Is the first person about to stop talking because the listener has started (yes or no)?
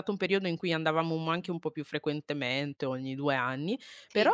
no